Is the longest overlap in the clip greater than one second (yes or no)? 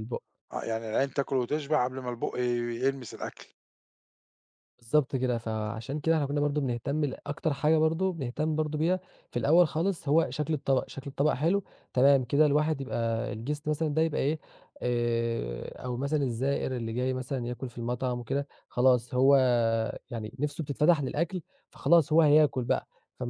no